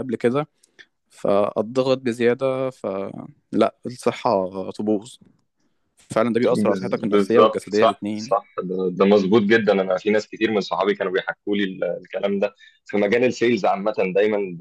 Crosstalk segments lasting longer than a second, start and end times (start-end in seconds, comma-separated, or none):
6.5-8.3